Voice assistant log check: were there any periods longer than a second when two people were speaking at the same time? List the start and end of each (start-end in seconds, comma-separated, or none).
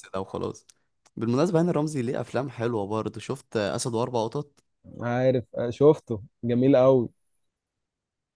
none